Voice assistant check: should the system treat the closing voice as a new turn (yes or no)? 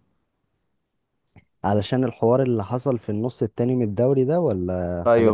yes